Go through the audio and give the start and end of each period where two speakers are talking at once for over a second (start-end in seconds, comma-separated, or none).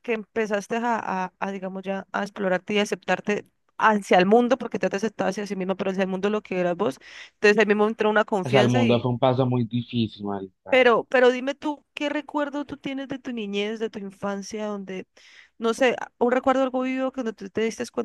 none